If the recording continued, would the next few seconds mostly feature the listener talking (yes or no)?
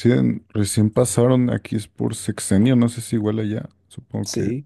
yes